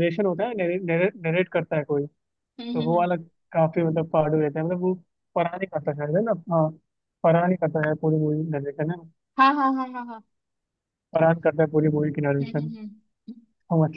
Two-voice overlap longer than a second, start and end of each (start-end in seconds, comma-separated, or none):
none